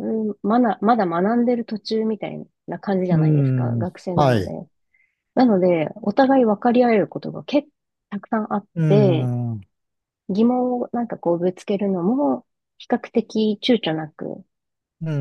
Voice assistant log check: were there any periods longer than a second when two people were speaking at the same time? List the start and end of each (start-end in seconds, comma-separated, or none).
3.1-4.5